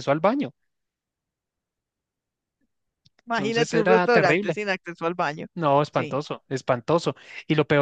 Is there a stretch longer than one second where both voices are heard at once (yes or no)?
yes